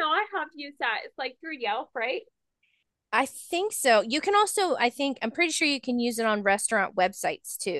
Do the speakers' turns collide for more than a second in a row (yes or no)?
no